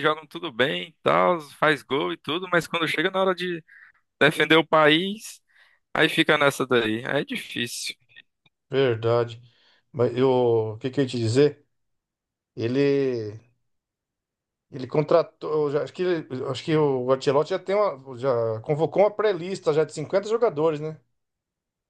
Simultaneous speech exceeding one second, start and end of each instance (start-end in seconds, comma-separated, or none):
none